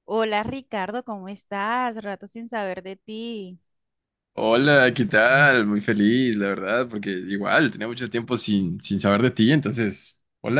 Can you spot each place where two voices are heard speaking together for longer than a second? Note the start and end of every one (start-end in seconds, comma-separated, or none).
none